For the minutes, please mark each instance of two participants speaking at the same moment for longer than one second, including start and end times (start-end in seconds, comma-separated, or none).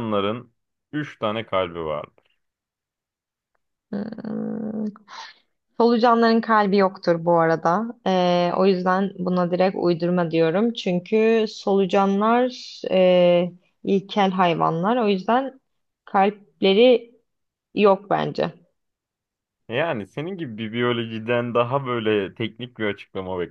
none